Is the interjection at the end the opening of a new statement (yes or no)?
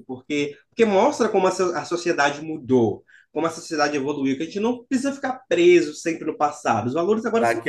yes